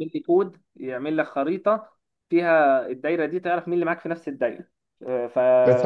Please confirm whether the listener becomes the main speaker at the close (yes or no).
yes